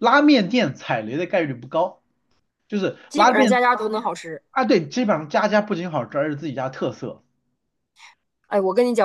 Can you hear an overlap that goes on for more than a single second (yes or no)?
no